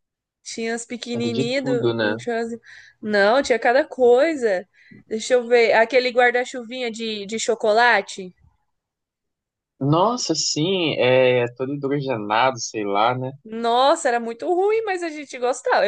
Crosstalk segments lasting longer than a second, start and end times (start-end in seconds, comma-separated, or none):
none